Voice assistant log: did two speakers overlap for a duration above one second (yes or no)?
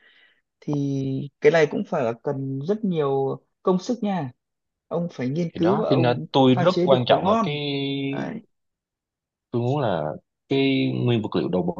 yes